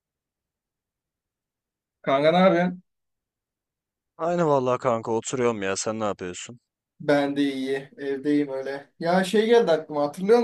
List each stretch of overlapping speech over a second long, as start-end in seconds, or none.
none